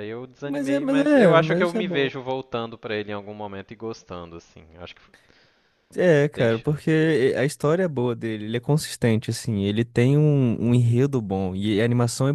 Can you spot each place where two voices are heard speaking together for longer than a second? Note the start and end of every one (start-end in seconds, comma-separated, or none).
0.5-2.1